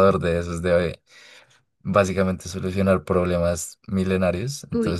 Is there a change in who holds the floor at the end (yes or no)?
no